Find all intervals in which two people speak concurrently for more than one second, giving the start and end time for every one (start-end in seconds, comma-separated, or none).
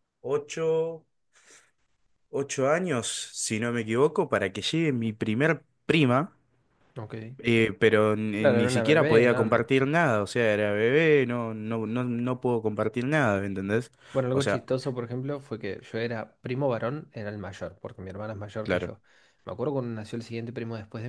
8.4-9.7